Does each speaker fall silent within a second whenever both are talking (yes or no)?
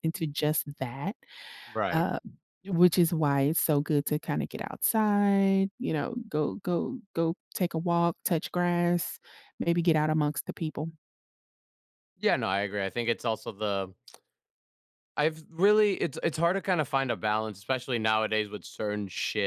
yes